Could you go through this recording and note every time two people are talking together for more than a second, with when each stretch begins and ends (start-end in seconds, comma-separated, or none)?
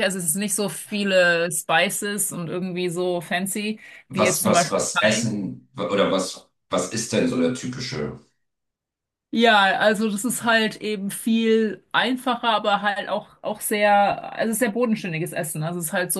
4.1-5.3